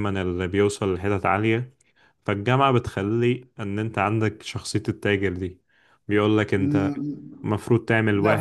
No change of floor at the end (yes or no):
no